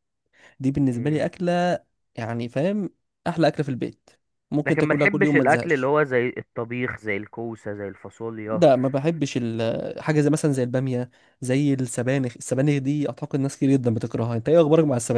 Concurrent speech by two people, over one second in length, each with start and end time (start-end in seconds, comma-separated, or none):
4.7-5.9